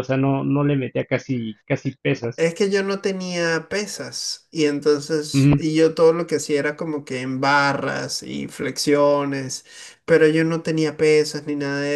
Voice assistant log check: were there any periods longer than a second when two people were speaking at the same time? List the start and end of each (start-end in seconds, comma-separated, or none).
none